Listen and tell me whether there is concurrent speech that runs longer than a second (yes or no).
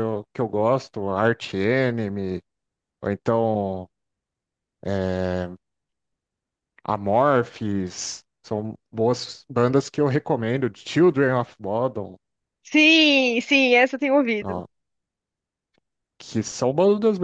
no